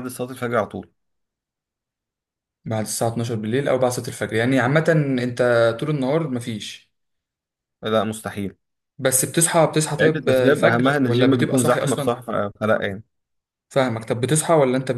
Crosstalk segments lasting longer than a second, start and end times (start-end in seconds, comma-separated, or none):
10.0-12.2